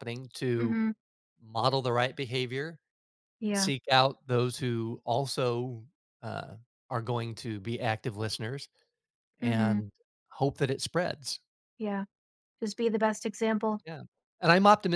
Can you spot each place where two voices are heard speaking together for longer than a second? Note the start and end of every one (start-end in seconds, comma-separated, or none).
none